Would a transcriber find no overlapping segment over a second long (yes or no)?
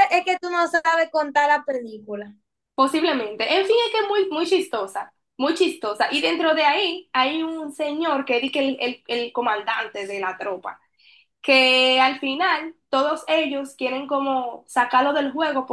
yes